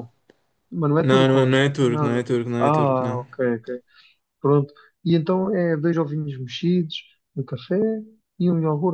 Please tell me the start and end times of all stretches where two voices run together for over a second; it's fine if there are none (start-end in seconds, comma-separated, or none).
1.0-3.2